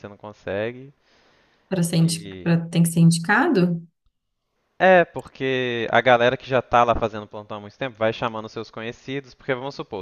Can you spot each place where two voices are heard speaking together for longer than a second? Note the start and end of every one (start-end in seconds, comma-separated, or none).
none